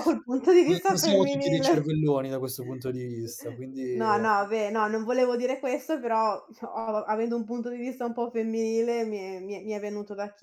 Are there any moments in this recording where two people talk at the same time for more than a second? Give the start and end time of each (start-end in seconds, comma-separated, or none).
0.6-1.9